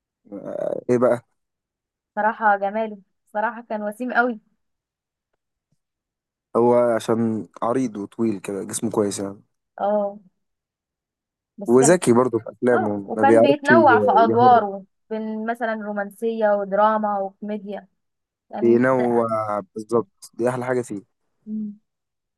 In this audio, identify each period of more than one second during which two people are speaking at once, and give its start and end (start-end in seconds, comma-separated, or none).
12.7-14.7